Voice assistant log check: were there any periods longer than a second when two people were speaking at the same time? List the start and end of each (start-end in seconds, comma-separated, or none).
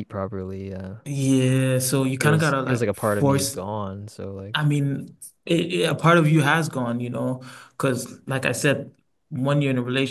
2.2-3.6